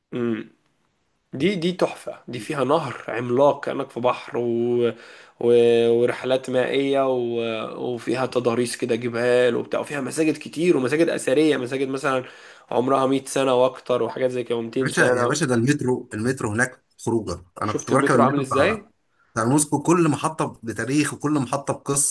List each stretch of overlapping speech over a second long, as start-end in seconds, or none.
17.6-18.8